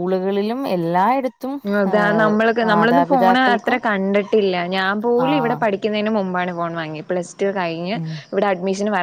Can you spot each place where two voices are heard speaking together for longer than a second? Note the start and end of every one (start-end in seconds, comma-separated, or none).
1.9-3.8